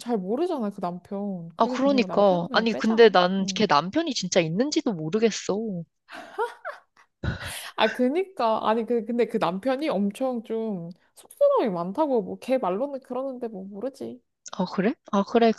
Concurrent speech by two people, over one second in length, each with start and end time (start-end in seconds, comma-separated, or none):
1.6-3.7